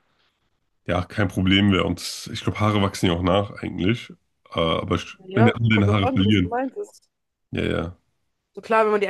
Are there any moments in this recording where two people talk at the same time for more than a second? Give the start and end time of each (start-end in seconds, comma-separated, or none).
5.2-6.6